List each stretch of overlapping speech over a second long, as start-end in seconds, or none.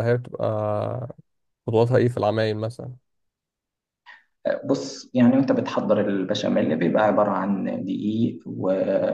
none